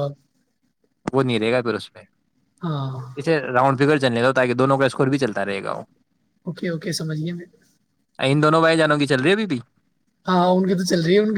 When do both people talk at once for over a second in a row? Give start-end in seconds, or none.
none